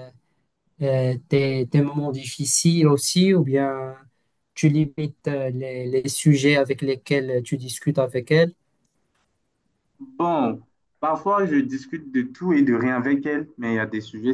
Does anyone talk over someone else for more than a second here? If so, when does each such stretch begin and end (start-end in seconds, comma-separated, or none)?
none